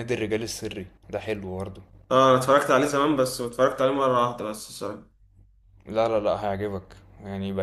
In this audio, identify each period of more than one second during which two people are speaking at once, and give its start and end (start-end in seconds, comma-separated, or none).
none